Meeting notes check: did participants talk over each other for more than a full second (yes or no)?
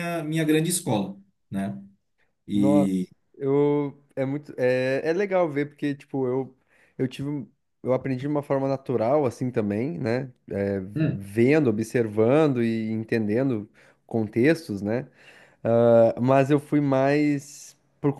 no